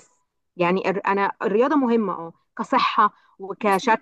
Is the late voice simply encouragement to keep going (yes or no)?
yes